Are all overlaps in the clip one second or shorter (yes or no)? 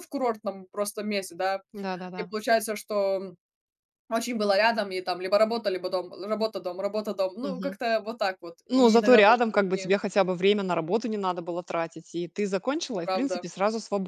no